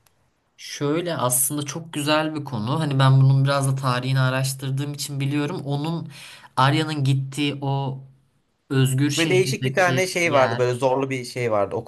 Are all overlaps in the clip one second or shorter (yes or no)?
no